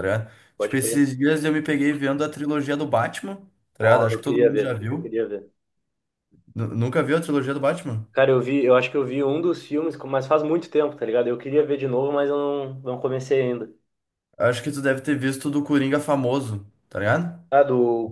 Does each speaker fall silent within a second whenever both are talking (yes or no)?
no